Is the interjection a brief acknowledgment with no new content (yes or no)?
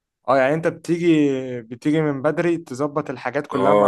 no